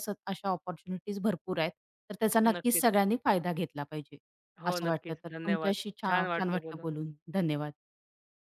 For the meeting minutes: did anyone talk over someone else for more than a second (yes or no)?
yes